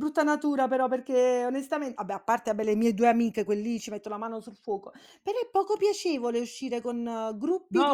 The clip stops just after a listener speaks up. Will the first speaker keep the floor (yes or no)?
no